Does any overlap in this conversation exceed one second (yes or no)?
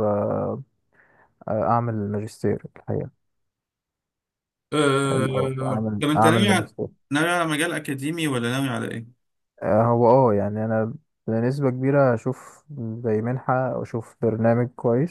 yes